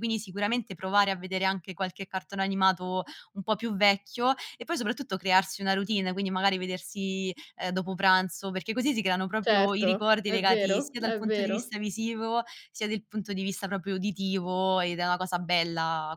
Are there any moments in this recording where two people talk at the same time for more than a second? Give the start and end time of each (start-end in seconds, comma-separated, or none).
9.4-11.7